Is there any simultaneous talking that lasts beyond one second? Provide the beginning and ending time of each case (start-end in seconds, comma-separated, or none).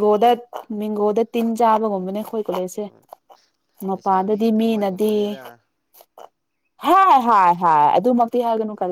3.9-5.2